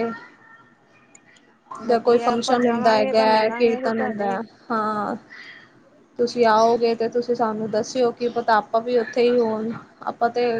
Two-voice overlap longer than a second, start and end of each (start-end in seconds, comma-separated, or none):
1.9-4.4